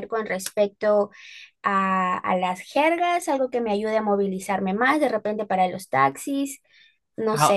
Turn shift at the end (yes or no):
yes